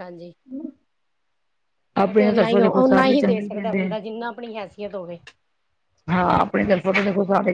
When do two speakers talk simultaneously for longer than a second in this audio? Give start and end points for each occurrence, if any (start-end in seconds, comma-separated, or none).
2.0-4.0